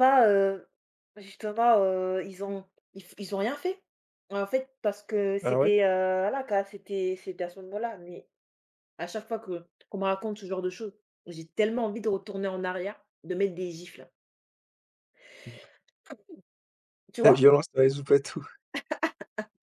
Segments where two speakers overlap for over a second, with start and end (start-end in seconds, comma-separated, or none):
none